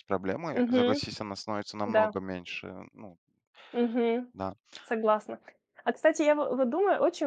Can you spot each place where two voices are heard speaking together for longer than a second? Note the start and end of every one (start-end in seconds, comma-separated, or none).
none